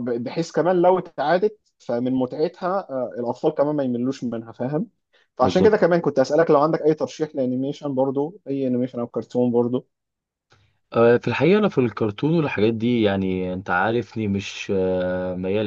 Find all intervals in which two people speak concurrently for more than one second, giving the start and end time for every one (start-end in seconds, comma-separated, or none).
none